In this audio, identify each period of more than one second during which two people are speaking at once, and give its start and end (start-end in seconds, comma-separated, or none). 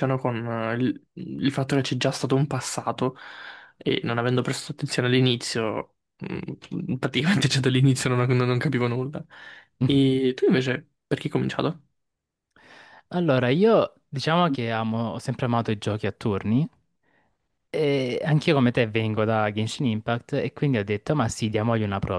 none